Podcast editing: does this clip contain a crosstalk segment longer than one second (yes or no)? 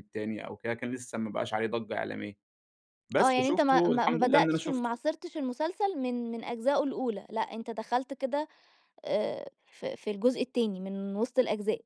yes